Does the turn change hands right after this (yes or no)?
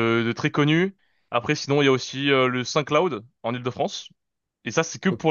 no